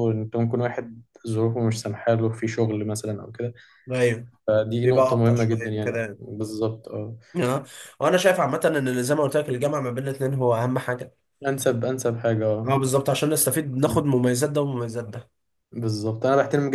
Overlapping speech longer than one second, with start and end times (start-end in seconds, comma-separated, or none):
4.8-6.2